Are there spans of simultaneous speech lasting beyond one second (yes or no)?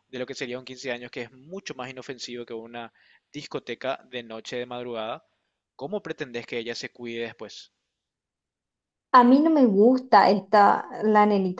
no